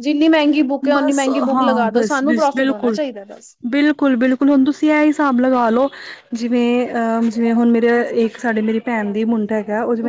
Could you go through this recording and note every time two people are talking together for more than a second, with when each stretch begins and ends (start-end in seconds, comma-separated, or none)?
0.9-3.0